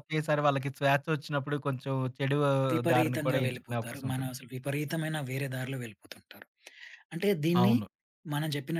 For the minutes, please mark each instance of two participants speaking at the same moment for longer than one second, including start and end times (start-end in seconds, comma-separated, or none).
2.9-4.3